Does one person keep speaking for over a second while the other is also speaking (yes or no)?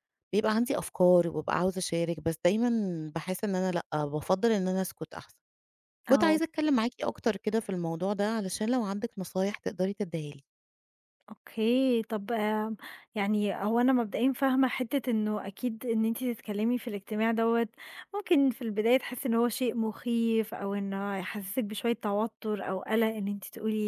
no